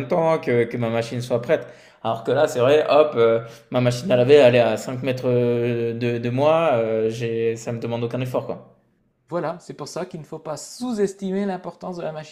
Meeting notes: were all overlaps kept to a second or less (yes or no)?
yes